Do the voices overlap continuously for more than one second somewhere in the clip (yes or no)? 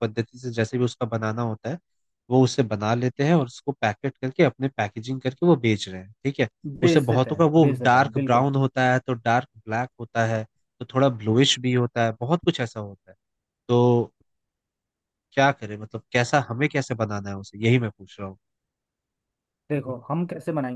yes